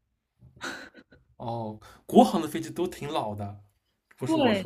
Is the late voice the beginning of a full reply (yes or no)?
yes